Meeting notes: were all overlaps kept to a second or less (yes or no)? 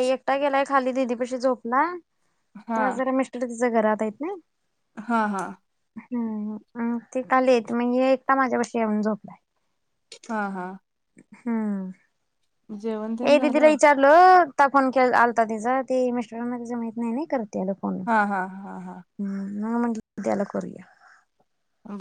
yes